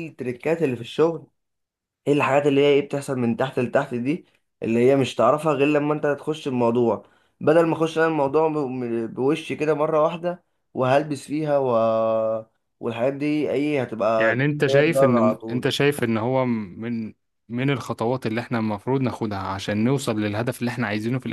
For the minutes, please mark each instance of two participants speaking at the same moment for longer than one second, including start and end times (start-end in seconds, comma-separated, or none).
14.2-15.7